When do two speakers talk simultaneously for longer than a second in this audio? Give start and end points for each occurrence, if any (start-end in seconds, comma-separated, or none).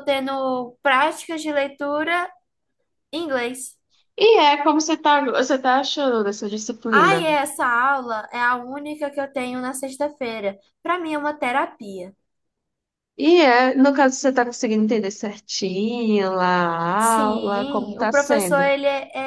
17.0-18.7